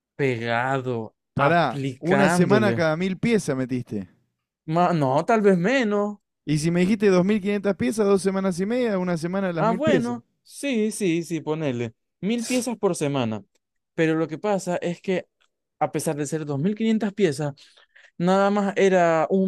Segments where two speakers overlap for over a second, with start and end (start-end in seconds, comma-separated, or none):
1.3-2.9